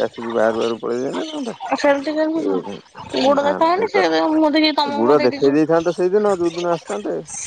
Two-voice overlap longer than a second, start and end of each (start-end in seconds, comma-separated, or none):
3.2-5.5